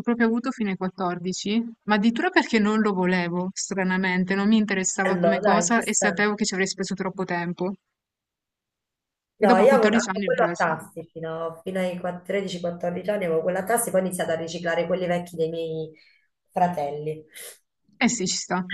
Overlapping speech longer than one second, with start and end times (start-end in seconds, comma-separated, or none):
5.0-6.3, 9.4-10.7